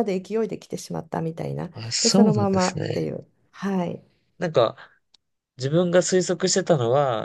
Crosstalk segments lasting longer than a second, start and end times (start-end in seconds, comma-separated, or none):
1.7-3.1